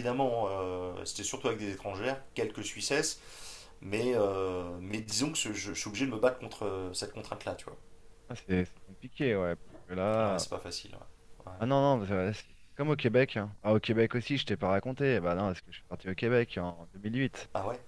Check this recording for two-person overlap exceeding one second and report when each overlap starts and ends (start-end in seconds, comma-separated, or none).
none